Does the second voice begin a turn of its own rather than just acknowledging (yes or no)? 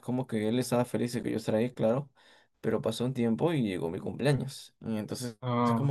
no